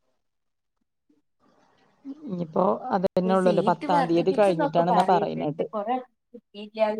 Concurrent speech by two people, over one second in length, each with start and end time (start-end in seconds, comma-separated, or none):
3.4-5.7